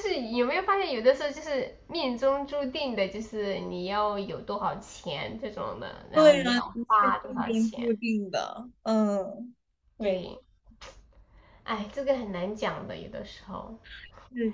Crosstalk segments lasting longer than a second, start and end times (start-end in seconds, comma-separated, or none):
6.1-7.8